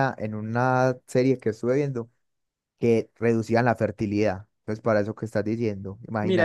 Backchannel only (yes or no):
no